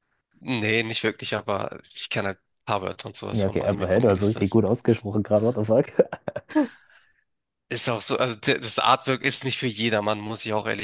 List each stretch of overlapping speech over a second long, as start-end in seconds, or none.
3.3-4.6